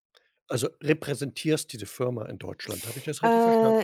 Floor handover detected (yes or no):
yes